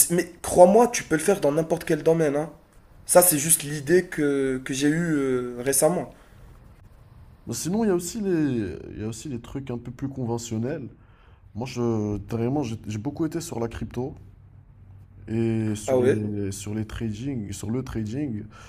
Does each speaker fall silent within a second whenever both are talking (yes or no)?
yes